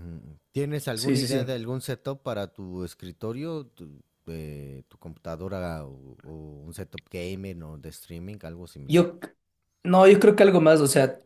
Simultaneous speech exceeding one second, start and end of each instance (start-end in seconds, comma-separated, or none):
none